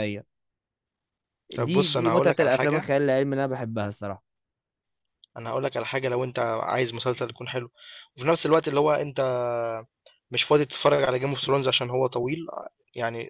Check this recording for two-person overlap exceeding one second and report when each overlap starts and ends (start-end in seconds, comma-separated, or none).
1.6-2.8